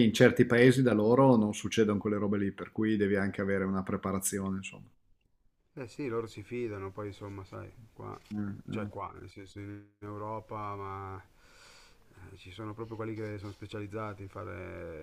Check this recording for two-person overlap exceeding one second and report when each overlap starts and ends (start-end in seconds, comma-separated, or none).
none